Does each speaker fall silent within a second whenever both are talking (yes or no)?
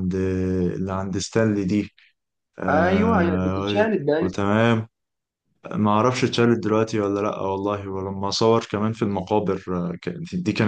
no